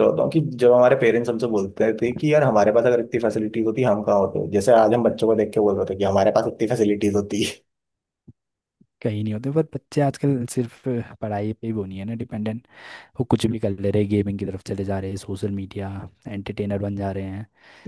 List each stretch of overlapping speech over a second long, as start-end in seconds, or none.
none